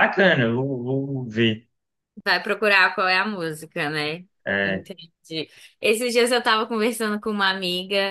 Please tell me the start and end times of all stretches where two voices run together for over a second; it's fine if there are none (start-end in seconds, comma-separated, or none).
none